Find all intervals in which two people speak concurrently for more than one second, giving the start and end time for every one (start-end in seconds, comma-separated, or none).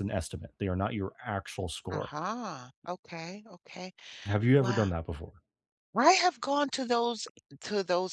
none